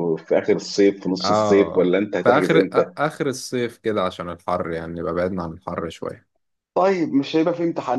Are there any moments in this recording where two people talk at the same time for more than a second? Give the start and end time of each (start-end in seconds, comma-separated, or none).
1.2-2.9